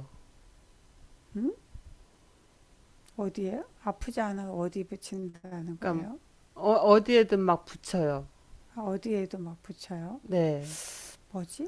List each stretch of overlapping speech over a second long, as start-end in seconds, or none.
none